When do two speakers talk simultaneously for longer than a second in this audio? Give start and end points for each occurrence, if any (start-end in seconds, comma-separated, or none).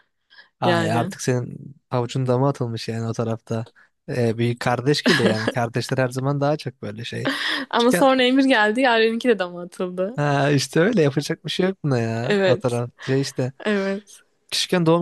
none